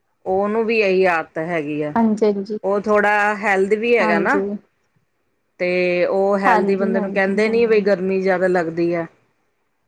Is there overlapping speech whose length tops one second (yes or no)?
yes